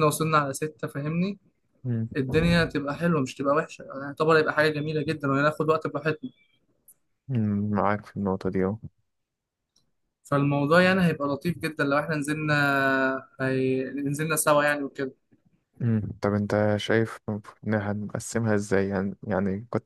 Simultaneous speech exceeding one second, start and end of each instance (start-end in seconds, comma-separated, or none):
none